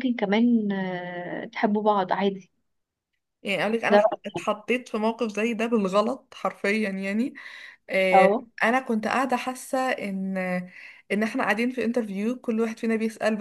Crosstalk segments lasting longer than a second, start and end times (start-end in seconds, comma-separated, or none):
none